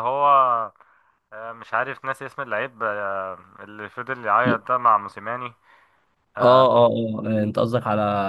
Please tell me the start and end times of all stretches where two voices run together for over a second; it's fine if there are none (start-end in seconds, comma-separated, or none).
none